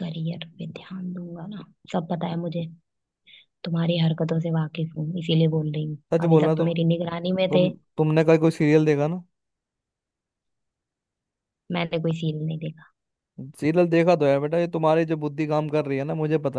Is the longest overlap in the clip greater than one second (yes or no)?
no